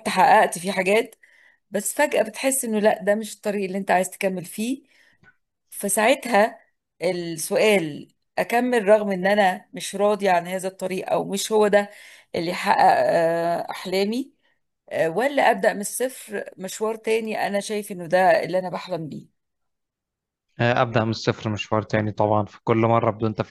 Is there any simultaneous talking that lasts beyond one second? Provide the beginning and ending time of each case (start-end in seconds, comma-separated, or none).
none